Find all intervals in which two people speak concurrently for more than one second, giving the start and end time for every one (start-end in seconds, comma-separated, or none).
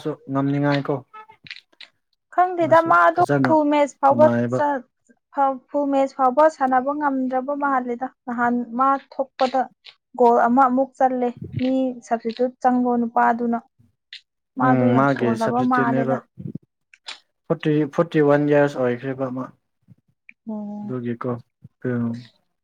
14.7-16.1